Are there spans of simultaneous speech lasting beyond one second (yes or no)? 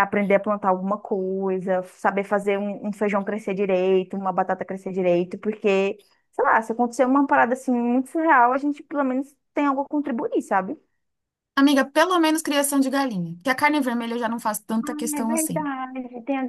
no